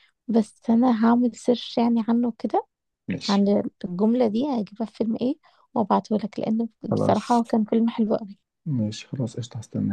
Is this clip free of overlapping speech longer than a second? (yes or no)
yes